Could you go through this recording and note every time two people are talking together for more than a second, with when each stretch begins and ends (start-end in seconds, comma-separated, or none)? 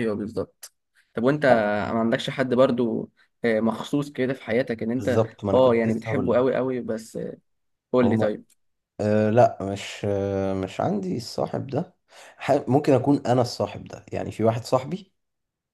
5.0-6.5